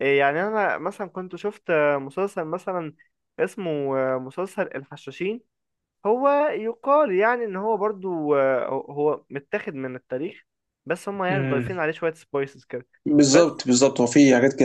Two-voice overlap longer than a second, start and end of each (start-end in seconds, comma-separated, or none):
none